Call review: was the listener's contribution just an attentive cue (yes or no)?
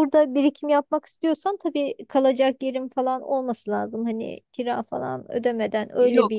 no